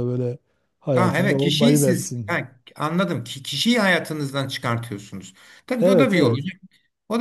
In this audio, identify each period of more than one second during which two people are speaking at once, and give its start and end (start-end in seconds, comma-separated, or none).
0.9-2.4